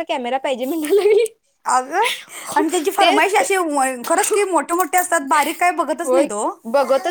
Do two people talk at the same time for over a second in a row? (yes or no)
no